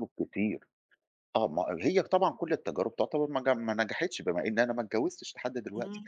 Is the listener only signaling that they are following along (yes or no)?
yes